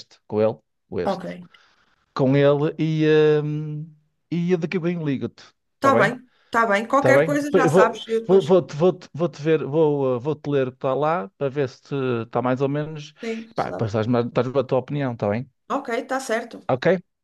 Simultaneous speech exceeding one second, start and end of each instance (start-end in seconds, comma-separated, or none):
7.0-8.5